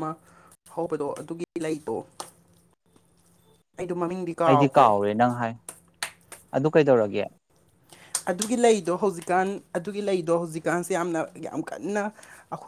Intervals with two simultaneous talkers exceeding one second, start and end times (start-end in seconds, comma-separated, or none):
none